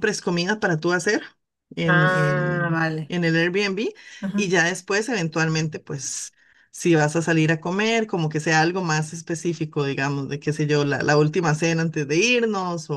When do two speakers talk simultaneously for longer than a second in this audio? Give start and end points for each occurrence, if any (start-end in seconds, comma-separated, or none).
1.8-3.1